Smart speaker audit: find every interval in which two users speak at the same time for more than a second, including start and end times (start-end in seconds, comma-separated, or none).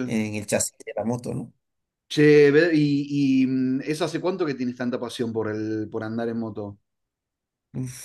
none